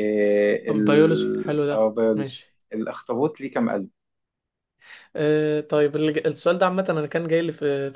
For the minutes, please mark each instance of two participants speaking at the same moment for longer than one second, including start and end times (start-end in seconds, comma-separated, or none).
0.7-2.5